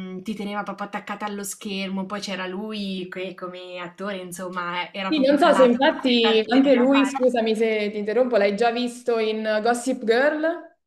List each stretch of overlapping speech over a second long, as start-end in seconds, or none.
5.1-7.3